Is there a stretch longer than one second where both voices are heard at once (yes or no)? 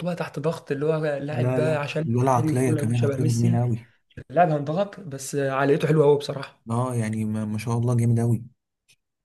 yes